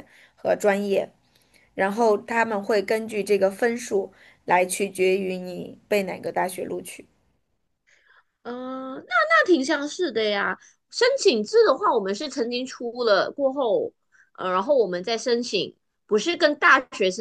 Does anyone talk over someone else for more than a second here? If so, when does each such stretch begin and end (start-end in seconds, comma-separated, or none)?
none